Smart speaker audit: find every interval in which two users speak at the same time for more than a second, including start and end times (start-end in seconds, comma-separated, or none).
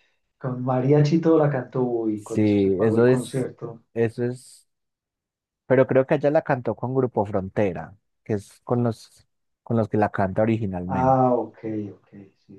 2.2-3.5